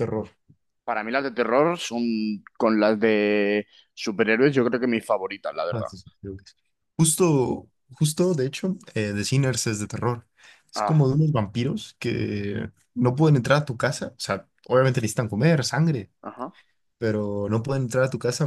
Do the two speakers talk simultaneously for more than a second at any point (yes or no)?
no